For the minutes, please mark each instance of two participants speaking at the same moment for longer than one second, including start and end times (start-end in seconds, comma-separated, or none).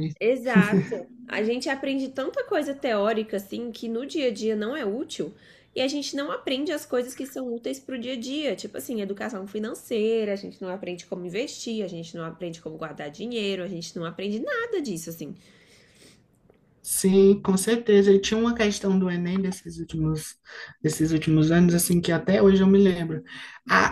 none